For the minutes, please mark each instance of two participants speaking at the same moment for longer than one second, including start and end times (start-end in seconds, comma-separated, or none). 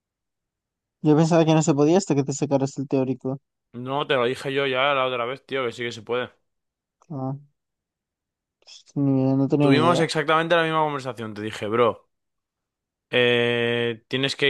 none